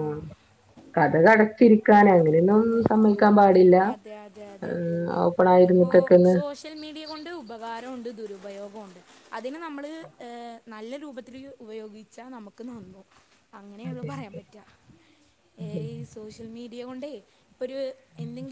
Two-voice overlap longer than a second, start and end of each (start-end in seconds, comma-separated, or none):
none